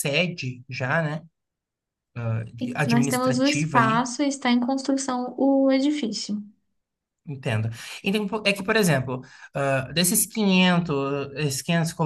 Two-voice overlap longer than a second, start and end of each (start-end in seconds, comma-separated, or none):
2.6-4.1